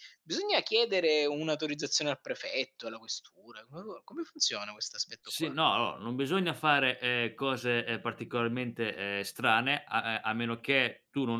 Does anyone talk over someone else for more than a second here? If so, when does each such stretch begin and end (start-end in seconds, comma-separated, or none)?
none